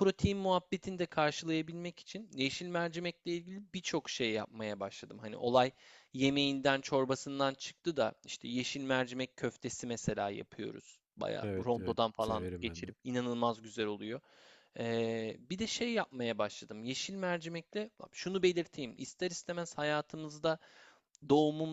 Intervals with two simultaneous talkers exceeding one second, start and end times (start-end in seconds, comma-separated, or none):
11.4-12.9